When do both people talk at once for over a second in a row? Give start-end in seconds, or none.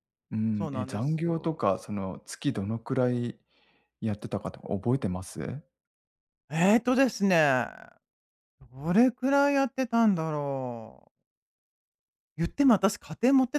0.5-1.7